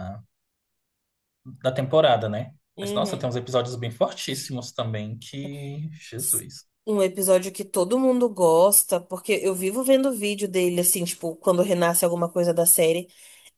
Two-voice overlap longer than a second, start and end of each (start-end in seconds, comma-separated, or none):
none